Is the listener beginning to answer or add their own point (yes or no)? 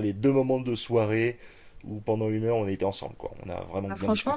yes